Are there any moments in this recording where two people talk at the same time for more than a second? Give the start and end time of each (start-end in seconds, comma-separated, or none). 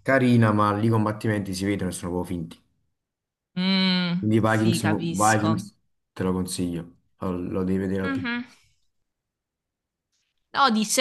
4.2-5.7